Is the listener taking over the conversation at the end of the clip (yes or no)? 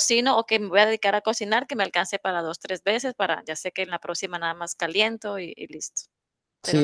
yes